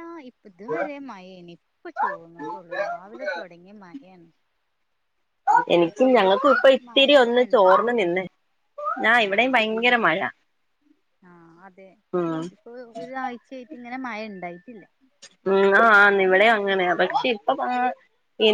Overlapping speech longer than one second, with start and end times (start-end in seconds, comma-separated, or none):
5.8-8.2